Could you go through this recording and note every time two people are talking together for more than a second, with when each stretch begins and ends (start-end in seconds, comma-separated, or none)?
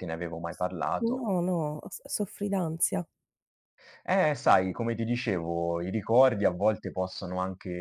none